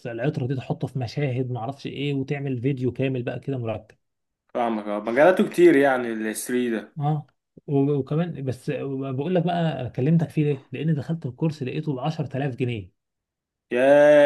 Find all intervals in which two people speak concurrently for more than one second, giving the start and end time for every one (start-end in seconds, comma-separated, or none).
none